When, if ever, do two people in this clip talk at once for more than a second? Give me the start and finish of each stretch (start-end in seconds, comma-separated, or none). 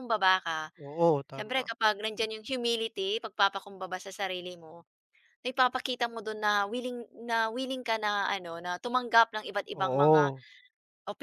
none